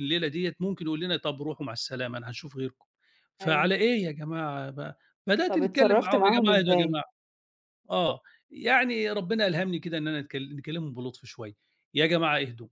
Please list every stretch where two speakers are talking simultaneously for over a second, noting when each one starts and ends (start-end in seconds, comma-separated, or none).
5.5-7.0